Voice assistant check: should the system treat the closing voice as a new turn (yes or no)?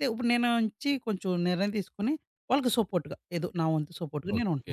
yes